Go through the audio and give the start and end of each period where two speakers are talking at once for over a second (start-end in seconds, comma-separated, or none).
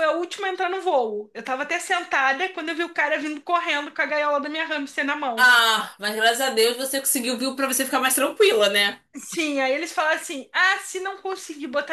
none